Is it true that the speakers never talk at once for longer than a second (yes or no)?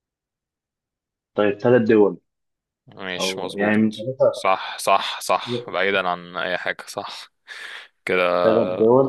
no